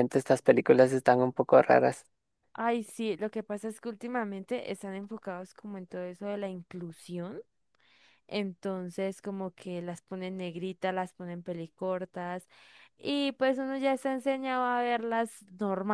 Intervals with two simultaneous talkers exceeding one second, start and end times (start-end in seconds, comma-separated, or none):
none